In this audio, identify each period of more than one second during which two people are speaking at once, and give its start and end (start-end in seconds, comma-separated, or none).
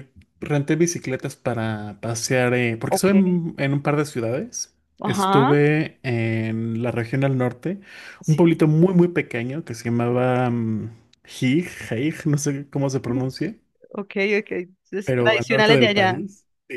15.0-16.2